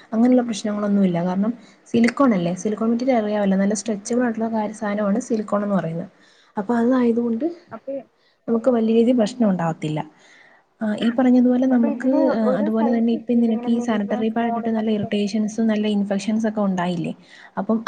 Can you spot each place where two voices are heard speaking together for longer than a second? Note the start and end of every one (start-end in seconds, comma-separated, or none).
12.8-15.1